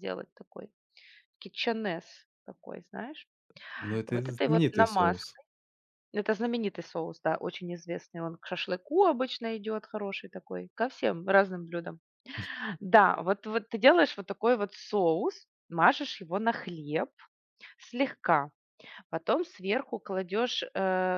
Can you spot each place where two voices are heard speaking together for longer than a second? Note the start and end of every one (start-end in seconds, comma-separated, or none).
4.1-5.4